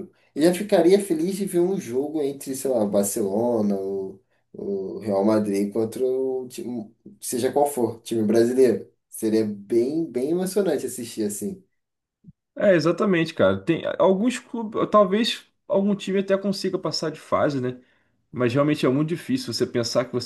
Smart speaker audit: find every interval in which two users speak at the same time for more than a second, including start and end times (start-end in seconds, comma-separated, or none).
none